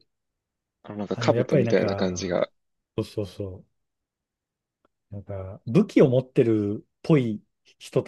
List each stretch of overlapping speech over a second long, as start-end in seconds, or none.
1.1-2.4